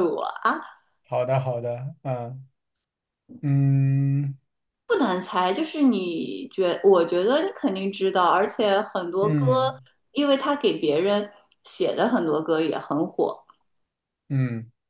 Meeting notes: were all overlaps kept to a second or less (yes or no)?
yes